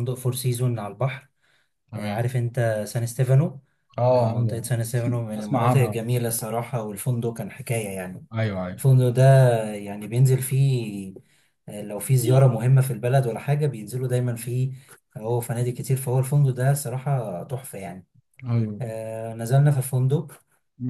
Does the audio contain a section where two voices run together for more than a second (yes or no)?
yes